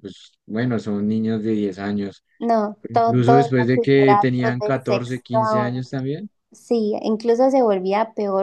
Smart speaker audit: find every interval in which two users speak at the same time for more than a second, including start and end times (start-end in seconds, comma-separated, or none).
2.8-5.9